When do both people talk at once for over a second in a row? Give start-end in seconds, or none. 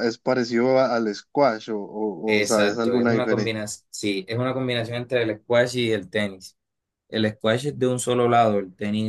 2.3-3.7